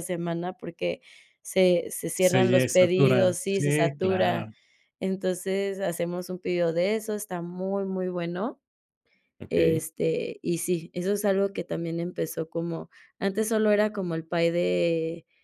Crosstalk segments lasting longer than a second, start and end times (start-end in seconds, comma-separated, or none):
2.2-4.5